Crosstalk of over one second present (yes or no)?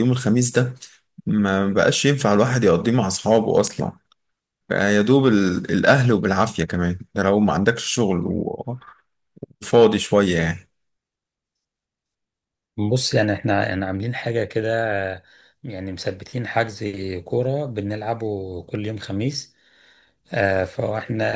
no